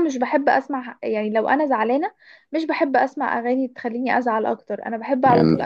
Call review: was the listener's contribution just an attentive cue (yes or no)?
yes